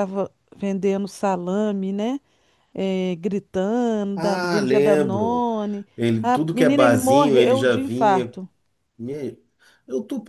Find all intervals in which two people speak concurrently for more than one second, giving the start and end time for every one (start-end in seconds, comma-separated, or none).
4.2-5.5, 6.2-8.3